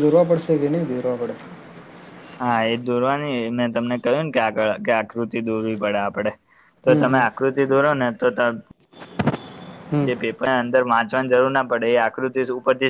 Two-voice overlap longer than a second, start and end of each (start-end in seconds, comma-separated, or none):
none